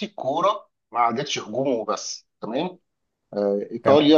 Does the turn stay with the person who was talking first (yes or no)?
yes